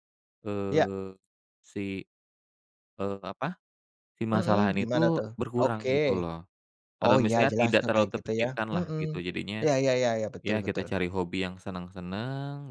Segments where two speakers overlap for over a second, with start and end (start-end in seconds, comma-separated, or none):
4.3-5.9, 7.0-9.0